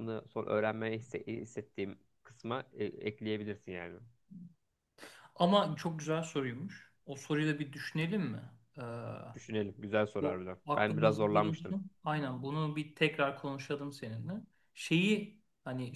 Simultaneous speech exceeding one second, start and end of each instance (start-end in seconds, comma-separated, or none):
10.2-11.8